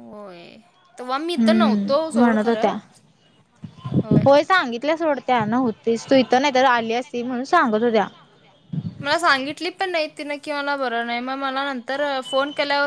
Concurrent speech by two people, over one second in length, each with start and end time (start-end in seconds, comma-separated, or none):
1.4-2.7